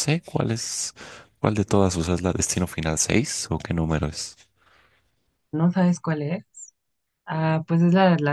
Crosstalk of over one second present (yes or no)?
no